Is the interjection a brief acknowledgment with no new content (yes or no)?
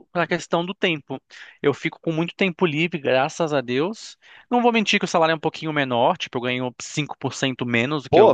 no